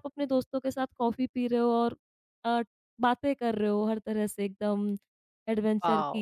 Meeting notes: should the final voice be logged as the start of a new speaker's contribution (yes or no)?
no